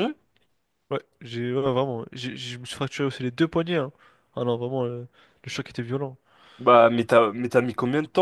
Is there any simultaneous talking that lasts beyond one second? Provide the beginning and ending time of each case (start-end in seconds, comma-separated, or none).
none